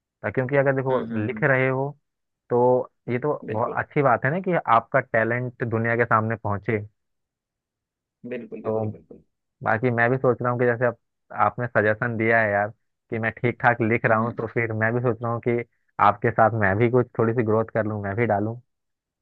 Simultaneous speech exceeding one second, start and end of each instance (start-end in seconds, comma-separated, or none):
none